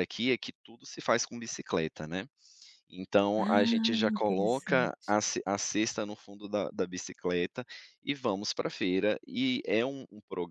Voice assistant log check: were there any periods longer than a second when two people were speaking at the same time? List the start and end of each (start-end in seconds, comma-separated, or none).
3.4-5.2